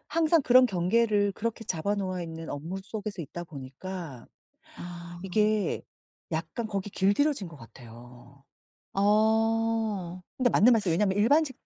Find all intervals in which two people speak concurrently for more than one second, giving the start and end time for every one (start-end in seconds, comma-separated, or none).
none